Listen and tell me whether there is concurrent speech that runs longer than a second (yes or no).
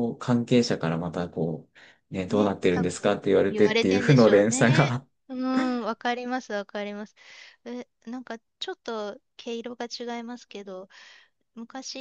yes